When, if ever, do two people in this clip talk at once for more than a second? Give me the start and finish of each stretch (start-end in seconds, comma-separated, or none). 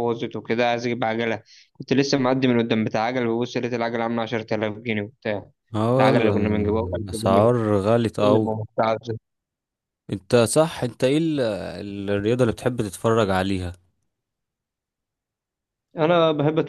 6.0-7.4